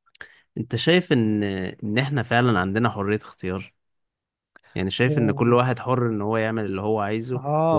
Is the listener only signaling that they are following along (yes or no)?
no